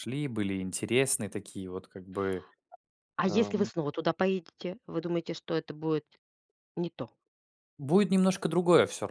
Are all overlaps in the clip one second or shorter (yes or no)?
yes